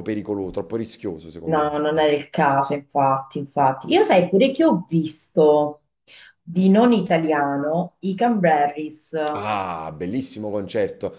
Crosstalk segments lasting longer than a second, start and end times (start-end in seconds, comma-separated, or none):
none